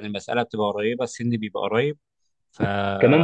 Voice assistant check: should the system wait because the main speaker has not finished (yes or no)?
no